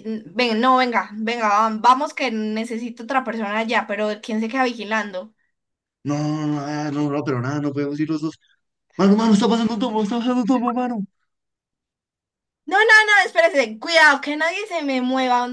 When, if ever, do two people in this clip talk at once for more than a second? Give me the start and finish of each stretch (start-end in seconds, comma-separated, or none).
none